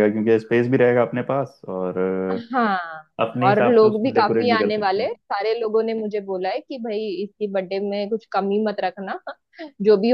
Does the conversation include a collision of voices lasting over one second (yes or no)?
yes